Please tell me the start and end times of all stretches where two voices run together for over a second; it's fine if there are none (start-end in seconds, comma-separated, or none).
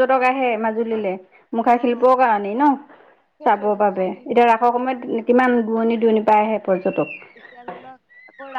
3.5-5.2